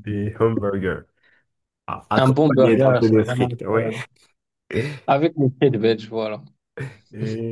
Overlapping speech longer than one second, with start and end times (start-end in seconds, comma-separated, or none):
2.2-3.9